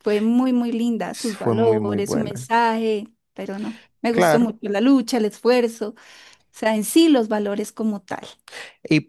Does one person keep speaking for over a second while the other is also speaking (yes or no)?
yes